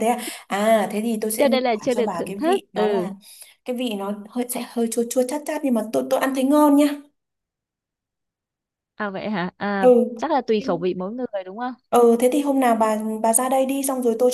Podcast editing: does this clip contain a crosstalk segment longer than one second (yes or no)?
yes